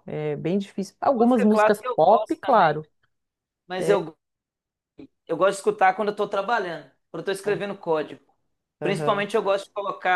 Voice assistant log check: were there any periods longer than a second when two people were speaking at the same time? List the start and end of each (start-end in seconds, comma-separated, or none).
1.2-2.8